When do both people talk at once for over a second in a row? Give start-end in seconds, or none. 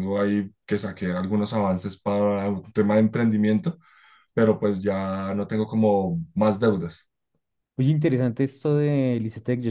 none